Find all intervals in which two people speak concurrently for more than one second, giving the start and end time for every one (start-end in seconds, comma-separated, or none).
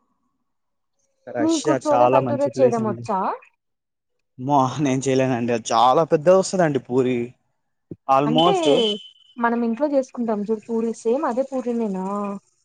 1.4-3.0